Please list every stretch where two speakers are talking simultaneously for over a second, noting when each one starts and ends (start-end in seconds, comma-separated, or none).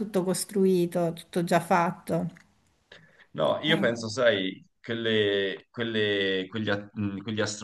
none